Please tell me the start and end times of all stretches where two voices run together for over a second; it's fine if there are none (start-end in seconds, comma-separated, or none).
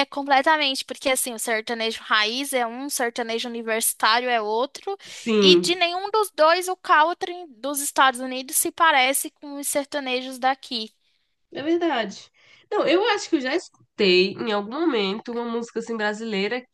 none